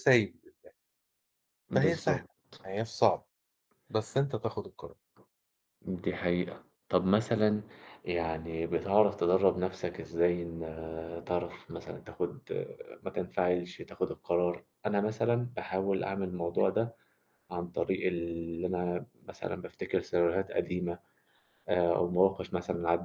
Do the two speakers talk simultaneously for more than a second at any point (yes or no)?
no